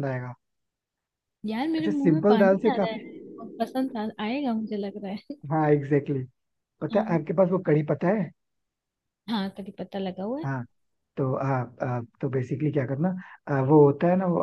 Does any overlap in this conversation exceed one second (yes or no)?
yes